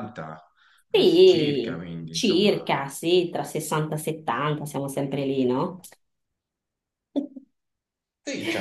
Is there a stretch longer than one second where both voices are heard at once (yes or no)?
yes